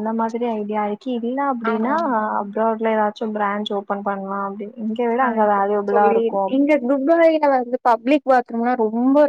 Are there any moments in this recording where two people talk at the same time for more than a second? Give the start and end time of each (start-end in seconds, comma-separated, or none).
none